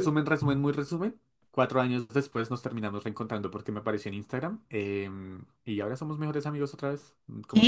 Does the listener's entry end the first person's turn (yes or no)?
yes